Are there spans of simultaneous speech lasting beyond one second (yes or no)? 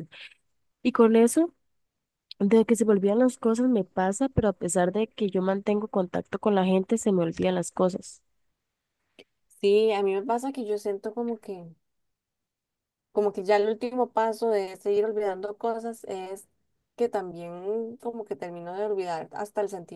no